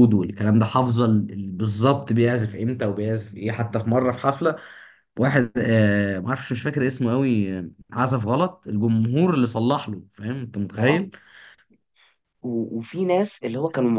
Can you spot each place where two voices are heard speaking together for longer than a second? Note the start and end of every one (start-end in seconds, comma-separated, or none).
none